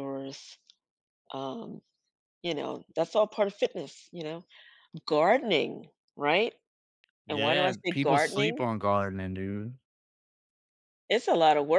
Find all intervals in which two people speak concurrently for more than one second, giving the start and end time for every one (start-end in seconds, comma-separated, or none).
7.3-8.6